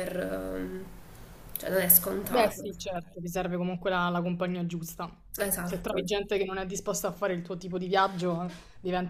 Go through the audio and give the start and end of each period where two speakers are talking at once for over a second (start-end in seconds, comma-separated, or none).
none